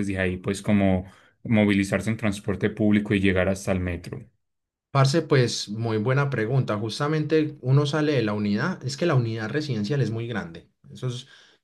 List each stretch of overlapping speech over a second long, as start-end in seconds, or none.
none